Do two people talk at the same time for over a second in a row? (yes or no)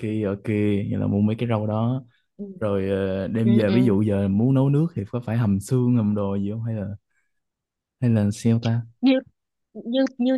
yes